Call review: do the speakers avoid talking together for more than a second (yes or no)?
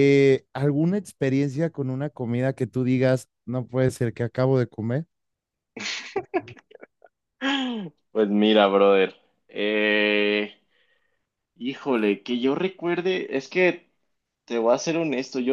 yes